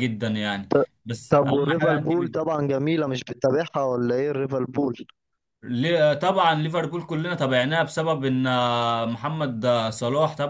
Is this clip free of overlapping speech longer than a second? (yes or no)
no